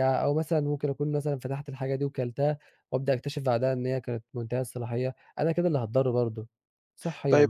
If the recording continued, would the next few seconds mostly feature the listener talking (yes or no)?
yes